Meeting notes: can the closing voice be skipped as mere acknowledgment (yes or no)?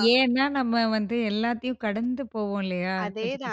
no